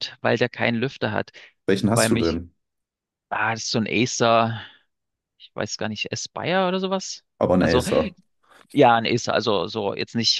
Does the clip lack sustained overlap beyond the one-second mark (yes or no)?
yes